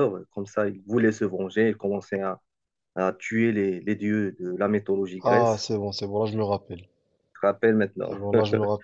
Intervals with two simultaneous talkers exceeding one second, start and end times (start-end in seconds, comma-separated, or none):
none